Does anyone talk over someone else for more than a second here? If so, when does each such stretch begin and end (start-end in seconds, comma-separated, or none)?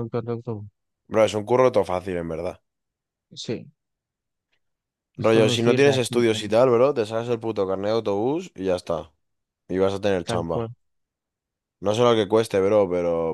5.2-6.6